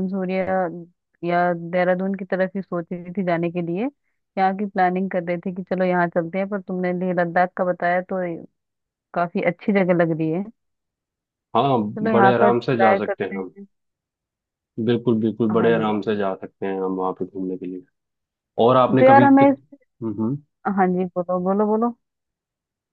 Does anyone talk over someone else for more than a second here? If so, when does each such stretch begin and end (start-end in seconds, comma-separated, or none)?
12.0-13.5